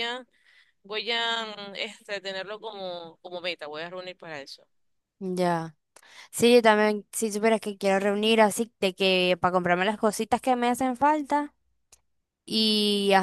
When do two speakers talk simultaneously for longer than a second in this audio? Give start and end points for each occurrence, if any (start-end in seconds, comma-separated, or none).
none